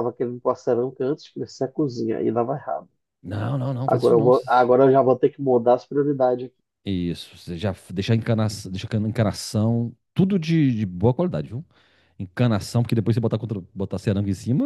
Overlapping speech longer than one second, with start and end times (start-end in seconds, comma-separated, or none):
none